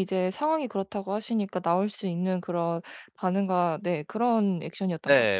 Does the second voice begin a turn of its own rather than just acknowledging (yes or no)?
yes